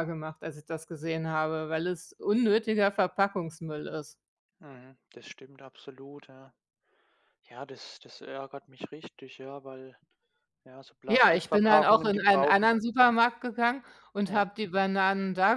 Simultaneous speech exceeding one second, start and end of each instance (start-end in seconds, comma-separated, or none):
11.1-12.7